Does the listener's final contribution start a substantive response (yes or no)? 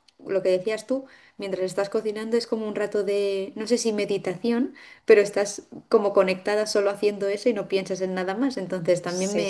no